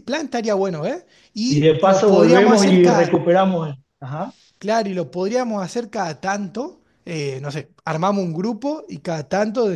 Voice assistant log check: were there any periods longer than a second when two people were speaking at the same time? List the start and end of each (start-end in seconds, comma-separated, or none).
1.5-3.2